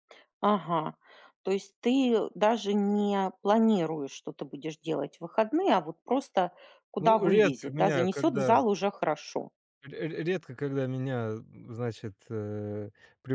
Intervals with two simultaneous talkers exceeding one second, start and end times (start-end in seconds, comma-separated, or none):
7.0-8.6